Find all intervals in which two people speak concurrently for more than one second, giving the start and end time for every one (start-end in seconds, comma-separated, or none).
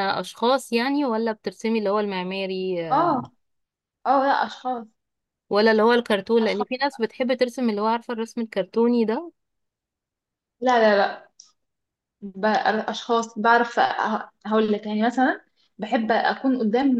none